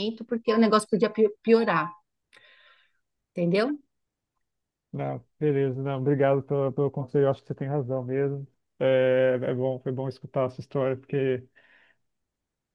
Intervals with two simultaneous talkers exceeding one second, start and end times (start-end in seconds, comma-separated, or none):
none